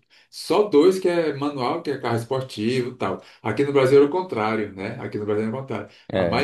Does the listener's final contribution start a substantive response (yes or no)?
no